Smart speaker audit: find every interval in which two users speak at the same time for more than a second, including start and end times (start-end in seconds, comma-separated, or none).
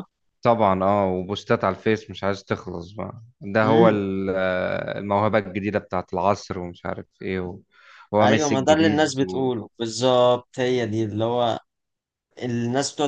8.2-9.5